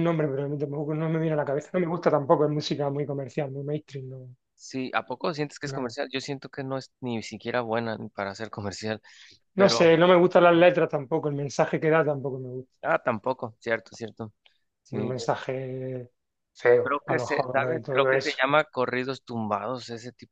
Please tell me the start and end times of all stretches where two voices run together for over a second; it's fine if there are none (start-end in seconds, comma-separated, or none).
16.8-18.4